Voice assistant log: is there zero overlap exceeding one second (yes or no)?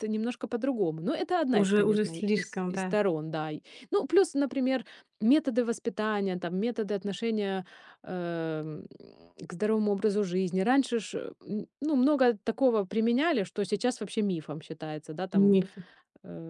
no